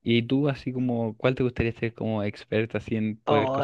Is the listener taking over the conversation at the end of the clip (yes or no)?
yes